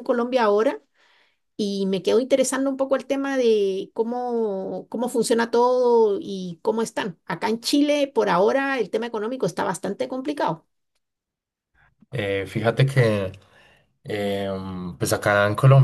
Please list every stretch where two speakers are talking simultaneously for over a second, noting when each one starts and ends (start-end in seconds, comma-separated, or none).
none